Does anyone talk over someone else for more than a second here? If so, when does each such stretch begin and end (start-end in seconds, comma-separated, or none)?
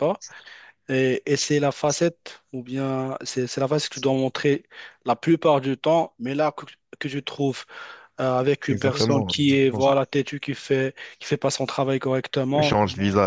8.7-10.0